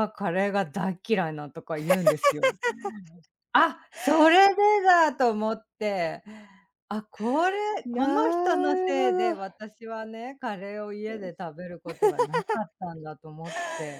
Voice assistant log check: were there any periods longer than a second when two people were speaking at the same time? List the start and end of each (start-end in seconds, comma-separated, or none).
7.8-9.5